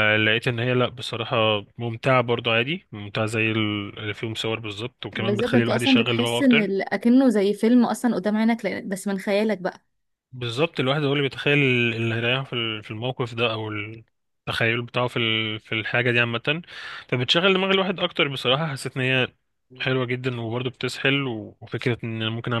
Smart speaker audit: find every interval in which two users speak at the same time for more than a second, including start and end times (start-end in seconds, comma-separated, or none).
5.1-6.7